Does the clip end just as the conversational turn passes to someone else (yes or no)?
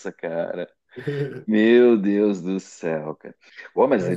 no